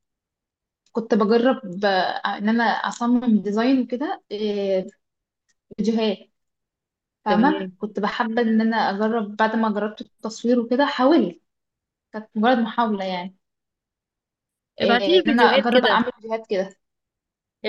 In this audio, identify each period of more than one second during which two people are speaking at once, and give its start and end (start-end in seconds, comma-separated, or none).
14.8-16.0